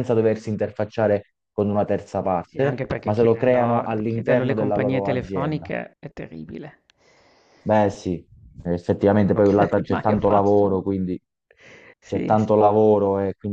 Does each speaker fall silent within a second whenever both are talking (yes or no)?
no